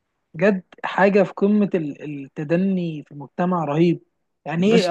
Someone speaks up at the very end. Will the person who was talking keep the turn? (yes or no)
yes